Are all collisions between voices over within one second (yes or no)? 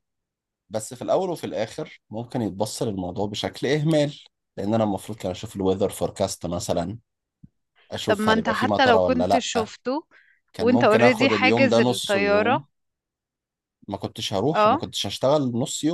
no